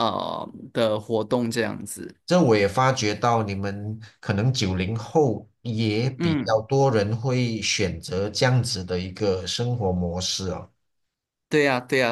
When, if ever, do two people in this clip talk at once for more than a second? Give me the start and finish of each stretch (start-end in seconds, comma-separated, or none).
none